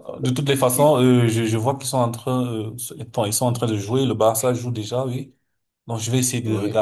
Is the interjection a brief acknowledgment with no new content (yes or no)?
yes